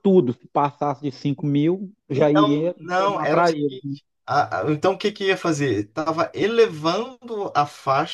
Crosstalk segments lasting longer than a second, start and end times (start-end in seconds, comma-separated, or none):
2.1-3.7